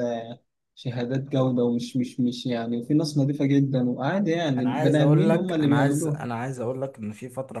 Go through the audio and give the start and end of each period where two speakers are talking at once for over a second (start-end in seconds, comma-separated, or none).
4.6-6.2